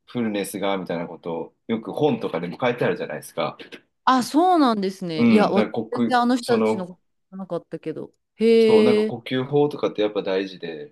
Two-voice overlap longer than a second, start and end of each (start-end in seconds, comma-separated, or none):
5.2-6.9